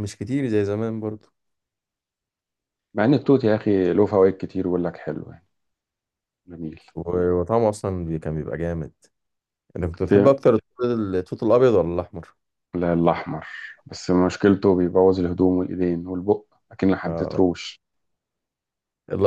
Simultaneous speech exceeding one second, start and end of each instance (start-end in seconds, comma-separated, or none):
none